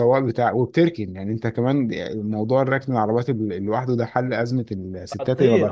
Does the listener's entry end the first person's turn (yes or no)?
yes